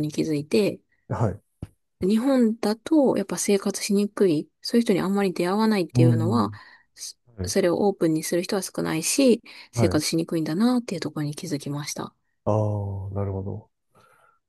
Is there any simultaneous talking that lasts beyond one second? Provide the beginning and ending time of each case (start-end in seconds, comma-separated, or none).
none